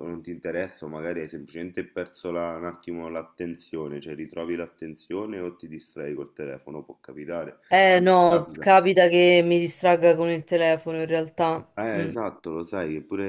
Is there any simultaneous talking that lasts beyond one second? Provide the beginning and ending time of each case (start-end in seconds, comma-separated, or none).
none